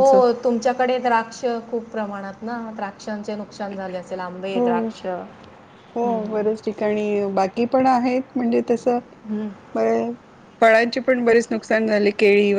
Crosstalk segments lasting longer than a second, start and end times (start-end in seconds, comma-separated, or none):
none